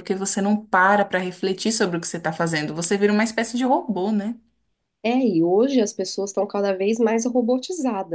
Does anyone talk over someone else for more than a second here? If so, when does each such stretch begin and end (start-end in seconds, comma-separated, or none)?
none